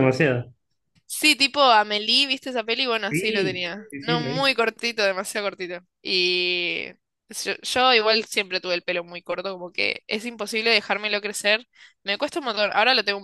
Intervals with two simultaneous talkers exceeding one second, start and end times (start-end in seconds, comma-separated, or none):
3.1-4.6